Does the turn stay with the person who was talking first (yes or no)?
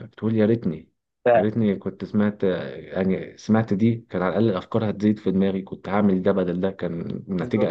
no